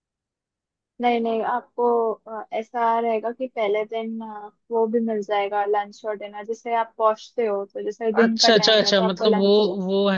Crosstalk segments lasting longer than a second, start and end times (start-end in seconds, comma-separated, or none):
8.2-9.5